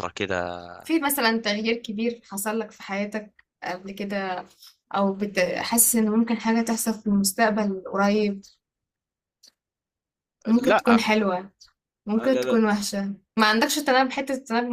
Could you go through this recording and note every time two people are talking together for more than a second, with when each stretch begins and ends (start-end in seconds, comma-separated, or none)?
none